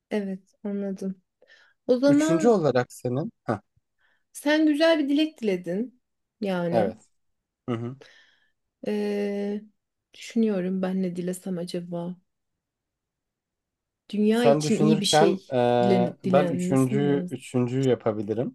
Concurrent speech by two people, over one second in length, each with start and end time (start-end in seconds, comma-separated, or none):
14.3-17.4